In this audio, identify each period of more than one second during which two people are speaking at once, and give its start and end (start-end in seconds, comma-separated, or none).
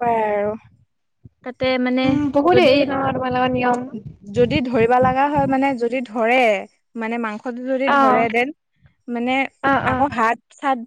none